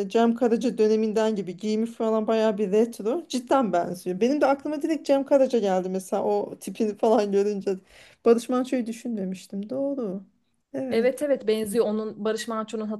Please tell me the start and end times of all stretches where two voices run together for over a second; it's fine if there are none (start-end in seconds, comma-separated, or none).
none